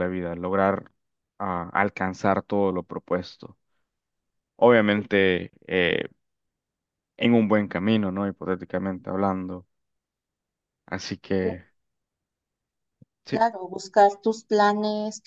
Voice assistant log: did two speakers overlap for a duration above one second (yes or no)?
no